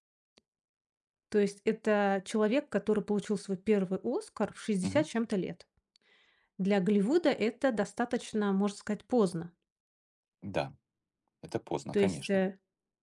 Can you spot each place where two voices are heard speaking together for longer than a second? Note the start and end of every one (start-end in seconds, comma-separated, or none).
none